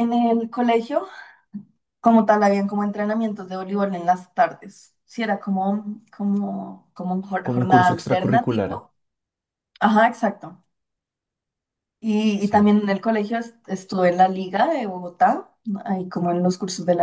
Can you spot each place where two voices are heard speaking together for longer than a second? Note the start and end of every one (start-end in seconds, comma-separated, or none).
7.4-8.8